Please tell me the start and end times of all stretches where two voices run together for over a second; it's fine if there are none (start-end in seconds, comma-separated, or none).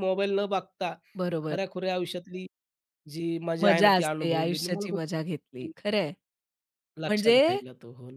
3.6-5.7